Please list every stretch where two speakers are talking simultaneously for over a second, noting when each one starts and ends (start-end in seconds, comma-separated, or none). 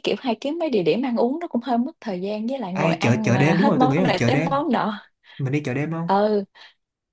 2.7-4.6